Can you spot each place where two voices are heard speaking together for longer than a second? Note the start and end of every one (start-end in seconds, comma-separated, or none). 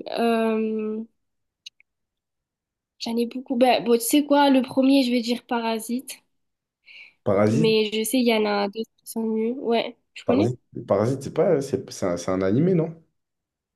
none